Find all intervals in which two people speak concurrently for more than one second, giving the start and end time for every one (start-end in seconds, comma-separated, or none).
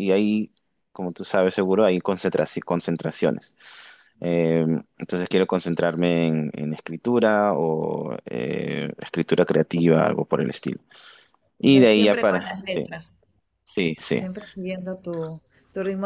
11.6-12.9